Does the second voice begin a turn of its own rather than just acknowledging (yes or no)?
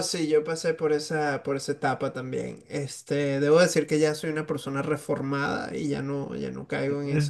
yes